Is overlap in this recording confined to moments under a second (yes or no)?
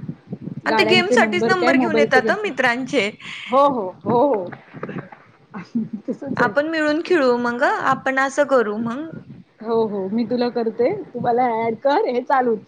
no